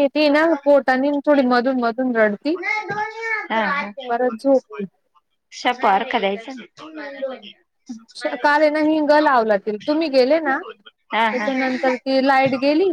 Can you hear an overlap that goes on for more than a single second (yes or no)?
no